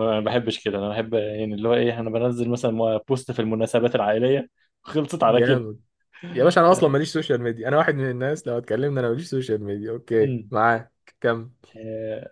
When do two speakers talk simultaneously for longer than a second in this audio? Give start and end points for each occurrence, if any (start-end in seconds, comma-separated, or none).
none